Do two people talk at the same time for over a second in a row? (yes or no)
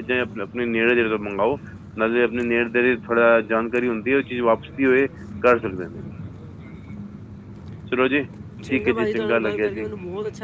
no